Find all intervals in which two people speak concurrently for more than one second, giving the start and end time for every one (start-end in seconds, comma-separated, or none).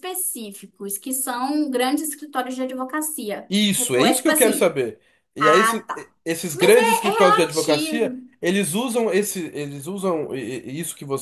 3.5-4.8, 6.5-8.2